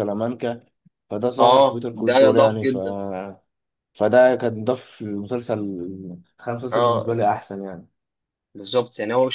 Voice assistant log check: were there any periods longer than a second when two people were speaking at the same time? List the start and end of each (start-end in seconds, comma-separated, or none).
1.4-2.8